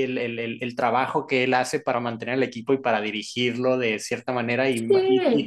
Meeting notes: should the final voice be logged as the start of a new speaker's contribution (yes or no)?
no